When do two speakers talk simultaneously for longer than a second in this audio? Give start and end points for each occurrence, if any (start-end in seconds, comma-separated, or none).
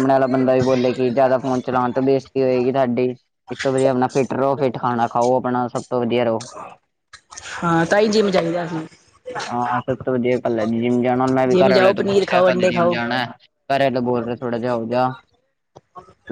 11.5-13.0